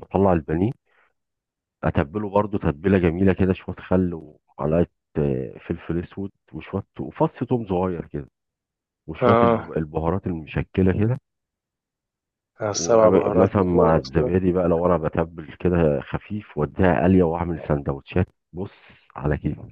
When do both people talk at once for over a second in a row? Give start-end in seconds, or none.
12.7-14.3